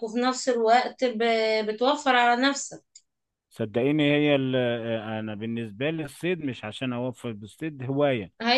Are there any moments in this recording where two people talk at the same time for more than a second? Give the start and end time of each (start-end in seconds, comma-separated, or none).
none